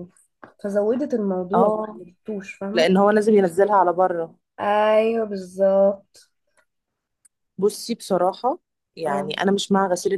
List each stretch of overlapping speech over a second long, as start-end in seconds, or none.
none